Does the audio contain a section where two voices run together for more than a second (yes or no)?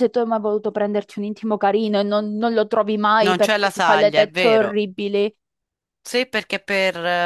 yes